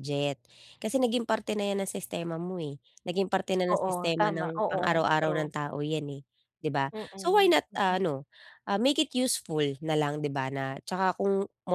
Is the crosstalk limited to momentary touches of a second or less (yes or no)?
no